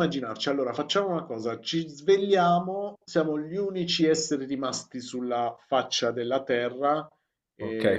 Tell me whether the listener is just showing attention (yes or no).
no